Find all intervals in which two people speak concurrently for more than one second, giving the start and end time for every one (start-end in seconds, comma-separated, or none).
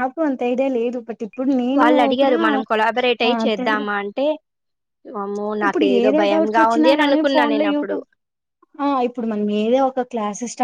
5.6-7.9